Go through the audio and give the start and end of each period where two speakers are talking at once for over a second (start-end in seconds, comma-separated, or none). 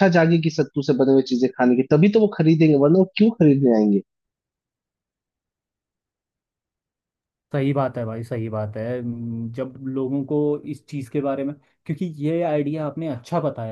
none